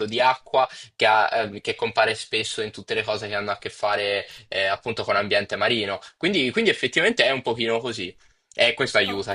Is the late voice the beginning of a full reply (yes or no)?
yes